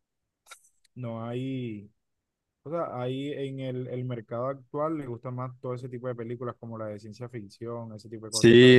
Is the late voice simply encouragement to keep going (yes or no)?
no